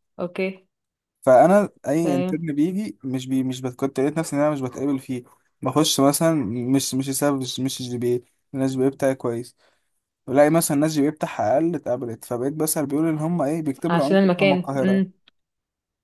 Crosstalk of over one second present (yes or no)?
yes